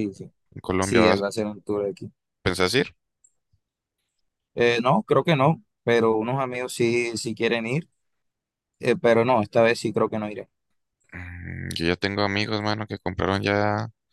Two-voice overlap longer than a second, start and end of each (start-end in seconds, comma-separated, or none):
none